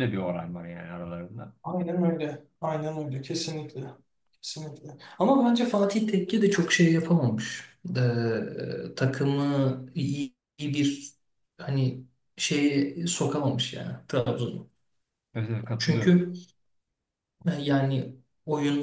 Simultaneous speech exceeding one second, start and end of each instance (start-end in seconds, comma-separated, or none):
none